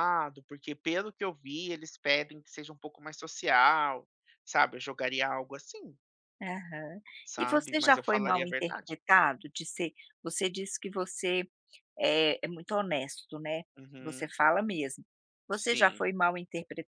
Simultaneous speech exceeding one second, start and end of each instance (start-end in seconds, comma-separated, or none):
7.4-9.0